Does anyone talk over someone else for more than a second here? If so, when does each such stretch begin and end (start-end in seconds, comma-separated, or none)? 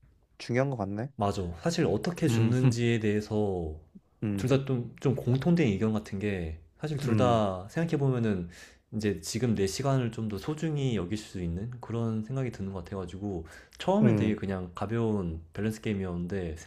none